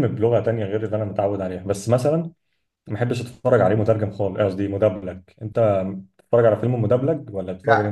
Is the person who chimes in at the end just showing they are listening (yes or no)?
no